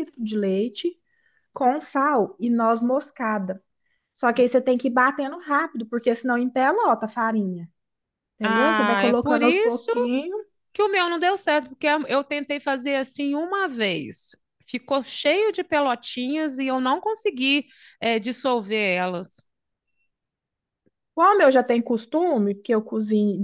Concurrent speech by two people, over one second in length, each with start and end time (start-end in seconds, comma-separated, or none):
8.4-9.9